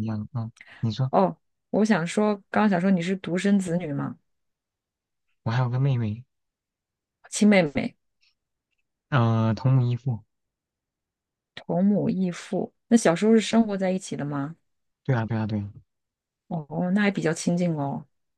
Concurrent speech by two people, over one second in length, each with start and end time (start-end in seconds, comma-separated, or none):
none